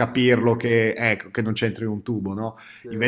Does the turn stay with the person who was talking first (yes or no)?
yes